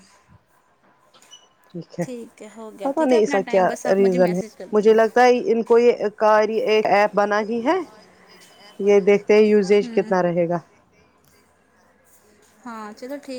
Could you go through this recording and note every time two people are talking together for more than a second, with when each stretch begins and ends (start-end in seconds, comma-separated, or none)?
2.8-5.2